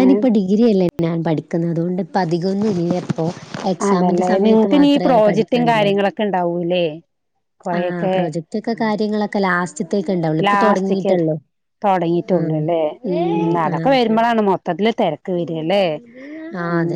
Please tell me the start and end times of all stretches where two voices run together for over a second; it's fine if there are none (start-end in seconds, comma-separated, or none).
3.9-6.0